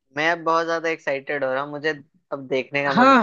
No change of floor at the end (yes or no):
no